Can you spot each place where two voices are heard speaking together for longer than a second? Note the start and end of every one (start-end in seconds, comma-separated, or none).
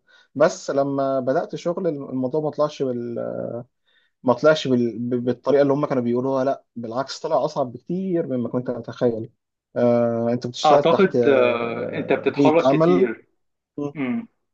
10.6-13.1